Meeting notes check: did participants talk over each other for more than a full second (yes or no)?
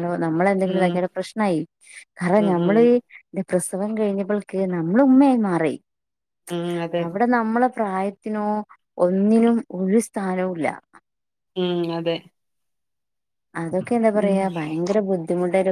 no